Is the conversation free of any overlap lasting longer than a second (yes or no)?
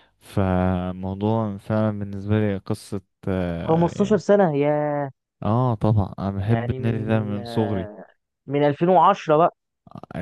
no